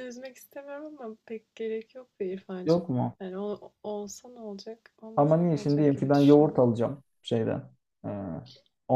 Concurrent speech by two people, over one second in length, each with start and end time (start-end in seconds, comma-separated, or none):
5.2-6.6